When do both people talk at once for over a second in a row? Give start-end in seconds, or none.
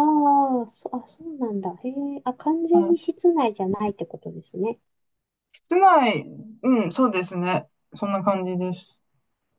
none